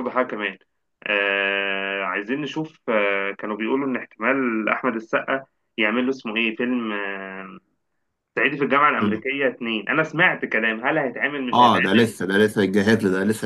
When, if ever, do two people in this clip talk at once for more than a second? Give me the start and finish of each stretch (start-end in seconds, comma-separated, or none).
none